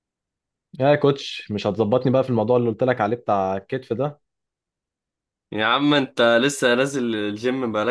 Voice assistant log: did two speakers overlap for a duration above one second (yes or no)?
no